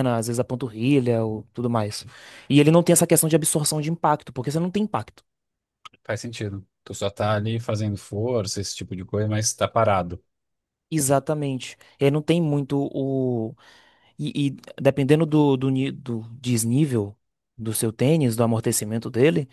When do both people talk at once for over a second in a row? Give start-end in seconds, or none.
none